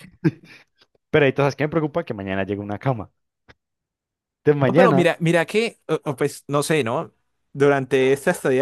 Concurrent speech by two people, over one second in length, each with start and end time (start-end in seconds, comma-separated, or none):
none